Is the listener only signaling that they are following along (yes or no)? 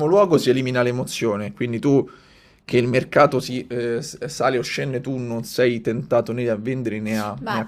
no